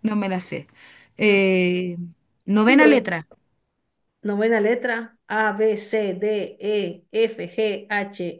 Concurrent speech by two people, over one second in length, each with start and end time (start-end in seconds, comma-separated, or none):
none